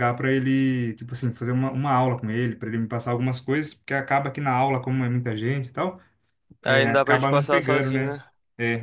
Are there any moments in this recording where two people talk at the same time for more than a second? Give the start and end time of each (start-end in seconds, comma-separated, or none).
6.6-8.2